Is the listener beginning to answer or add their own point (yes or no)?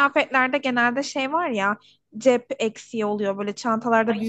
no